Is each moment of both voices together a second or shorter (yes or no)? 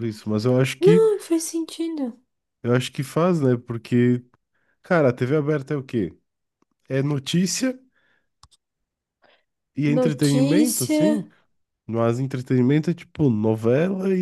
no